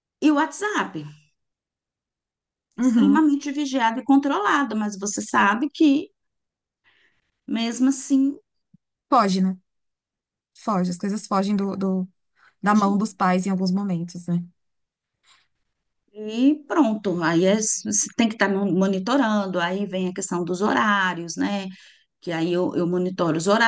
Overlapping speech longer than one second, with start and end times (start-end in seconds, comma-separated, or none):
none